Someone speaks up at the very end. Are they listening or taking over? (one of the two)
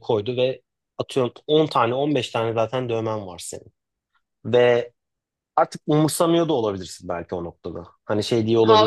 taking over